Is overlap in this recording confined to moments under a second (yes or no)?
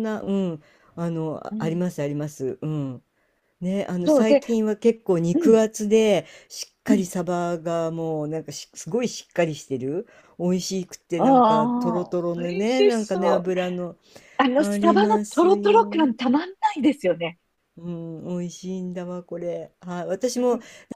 no